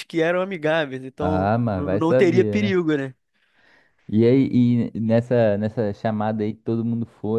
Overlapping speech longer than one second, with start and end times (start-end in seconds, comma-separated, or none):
1.2-2.8